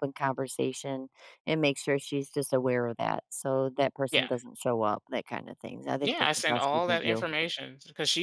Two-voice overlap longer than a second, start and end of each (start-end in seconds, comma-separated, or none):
6.0-7.2